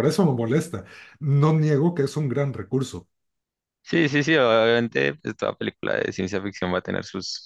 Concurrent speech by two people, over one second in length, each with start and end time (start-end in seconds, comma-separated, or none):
none